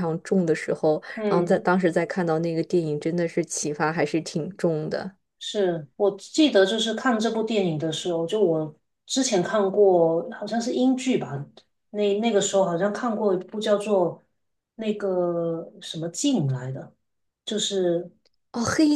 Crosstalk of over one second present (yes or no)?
no